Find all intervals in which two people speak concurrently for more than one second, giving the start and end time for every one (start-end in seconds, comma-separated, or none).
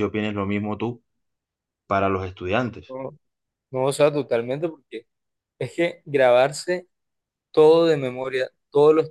none